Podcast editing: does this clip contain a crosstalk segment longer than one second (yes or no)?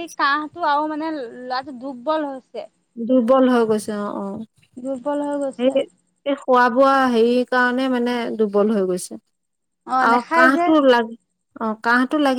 no